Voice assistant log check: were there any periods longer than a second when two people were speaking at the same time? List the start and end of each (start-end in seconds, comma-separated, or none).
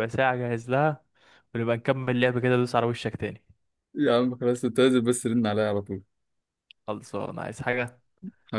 none